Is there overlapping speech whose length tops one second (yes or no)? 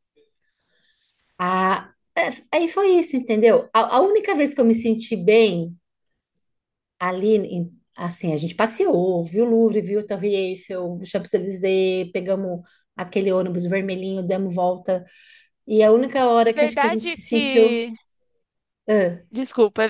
yes